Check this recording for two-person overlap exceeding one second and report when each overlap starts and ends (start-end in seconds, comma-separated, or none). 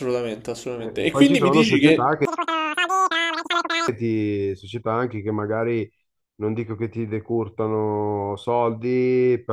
0.8-2.1